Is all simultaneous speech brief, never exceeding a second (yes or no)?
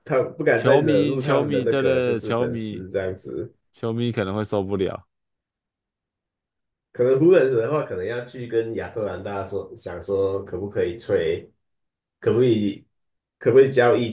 no